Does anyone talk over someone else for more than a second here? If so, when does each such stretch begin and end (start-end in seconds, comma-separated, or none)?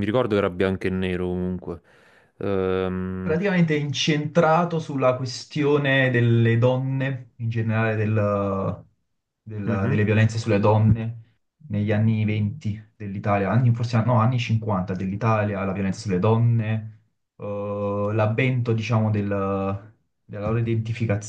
none